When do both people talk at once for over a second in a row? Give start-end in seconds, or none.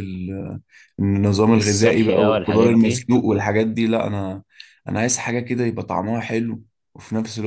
1.6-3.1